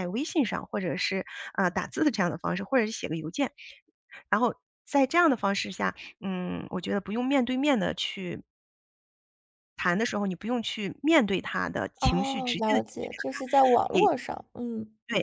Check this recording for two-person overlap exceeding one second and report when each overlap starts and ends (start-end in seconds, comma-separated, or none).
12.0-14.1